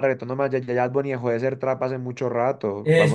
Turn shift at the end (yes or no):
yes